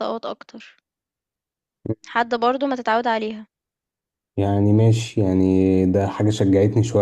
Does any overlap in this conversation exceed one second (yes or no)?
no